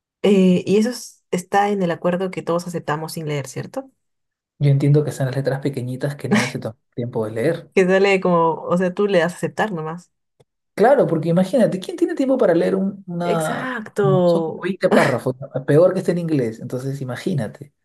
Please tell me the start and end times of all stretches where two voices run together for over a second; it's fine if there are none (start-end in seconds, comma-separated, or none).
13.2-14.7